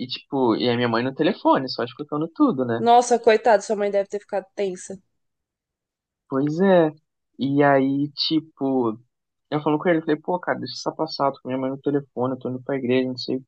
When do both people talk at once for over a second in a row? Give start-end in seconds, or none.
none